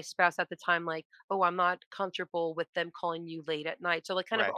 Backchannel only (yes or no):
yes